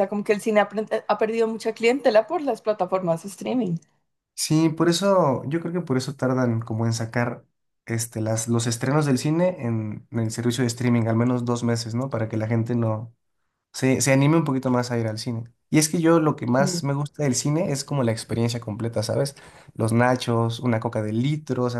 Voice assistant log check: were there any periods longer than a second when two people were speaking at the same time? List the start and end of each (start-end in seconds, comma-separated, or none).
none